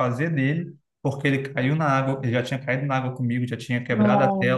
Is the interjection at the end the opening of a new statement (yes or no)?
no